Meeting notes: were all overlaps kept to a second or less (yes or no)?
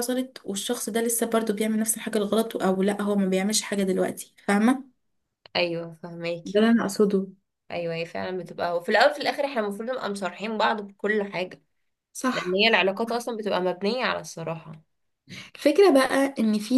yes